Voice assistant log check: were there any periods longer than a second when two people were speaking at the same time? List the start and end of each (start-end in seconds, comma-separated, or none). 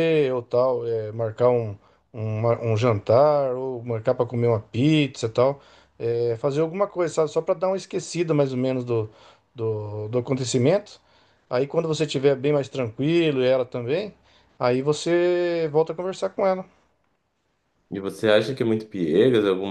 none